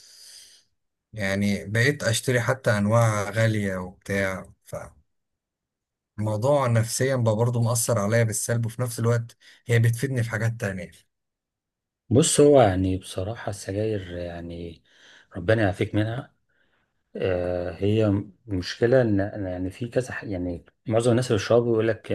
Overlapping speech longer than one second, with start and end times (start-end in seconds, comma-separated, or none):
none